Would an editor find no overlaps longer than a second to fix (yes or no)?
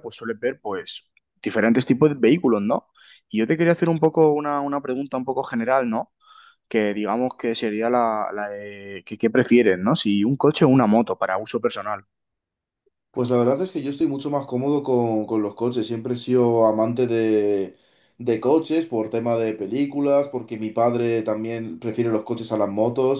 yes